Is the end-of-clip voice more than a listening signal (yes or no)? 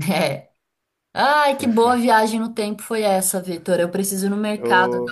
no